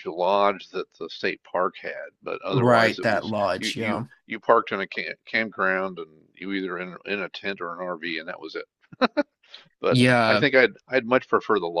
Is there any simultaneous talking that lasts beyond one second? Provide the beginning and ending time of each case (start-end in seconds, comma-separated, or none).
2.5-4.0